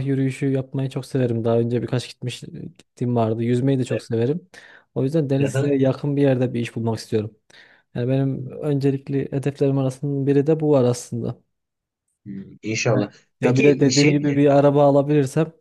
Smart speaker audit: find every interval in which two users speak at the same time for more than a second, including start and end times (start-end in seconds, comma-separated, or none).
12.9-14.6